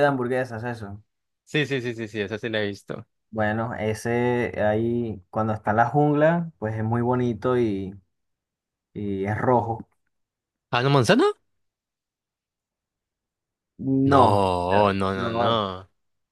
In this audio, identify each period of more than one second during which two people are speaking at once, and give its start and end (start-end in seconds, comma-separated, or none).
14.0-15.6